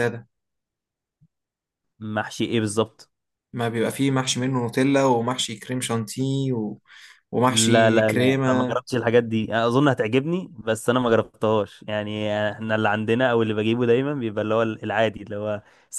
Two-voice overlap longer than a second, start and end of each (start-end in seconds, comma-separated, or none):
7.5-8.8